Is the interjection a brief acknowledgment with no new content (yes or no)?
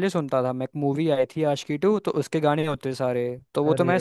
yes